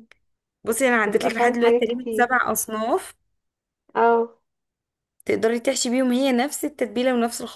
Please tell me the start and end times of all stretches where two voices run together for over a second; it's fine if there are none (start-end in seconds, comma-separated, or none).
1.1-2.3